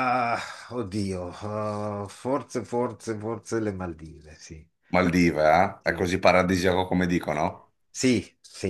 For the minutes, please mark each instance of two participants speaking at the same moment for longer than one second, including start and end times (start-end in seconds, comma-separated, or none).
none